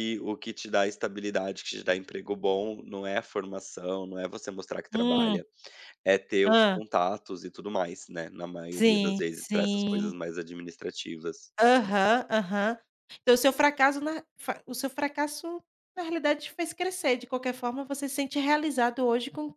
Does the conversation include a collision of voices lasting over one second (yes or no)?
yes